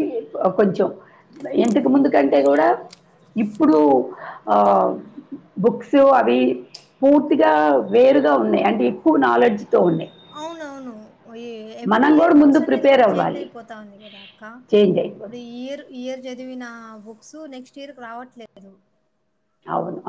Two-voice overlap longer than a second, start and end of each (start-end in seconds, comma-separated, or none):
11.9-13.4